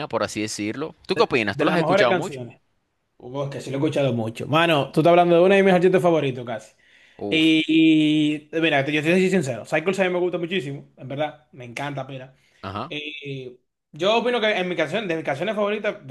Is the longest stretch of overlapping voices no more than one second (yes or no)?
no